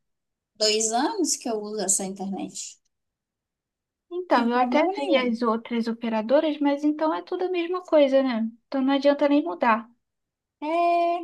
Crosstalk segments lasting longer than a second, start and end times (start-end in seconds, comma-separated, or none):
4.1-5.4